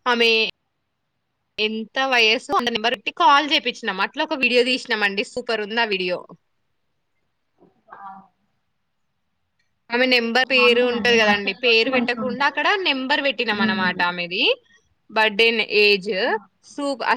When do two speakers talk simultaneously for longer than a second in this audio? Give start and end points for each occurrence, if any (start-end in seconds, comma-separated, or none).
10.6-12.6